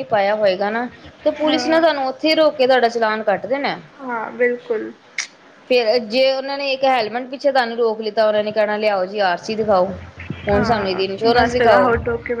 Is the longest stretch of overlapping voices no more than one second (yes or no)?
no